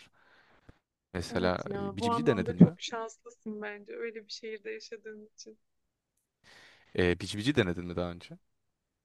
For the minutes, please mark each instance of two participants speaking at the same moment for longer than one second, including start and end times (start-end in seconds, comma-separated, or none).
1.3-2.8